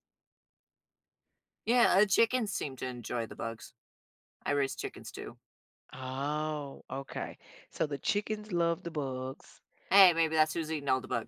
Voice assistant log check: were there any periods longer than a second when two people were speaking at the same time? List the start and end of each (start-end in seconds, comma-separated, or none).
none